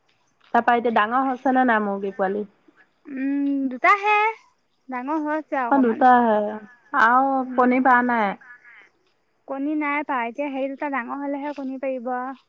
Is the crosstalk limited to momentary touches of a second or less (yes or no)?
yes